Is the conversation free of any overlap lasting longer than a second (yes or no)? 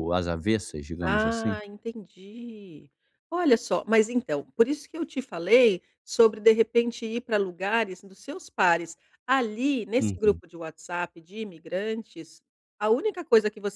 yes